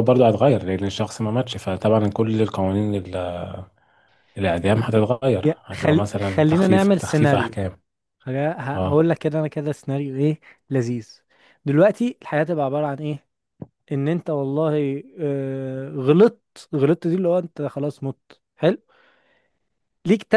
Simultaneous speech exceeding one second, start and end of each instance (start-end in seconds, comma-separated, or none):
5.4-7.6